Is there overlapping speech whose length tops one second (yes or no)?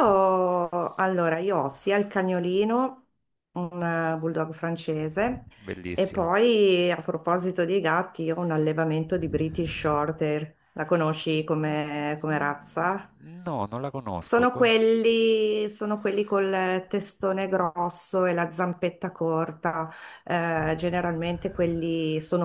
no